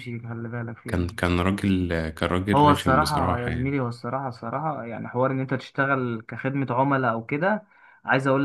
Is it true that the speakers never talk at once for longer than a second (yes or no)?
no